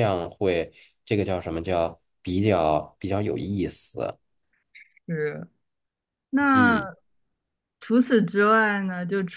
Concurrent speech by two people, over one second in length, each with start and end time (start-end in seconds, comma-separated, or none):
none